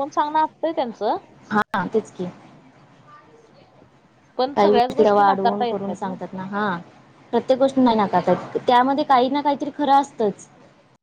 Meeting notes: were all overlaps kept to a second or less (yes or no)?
no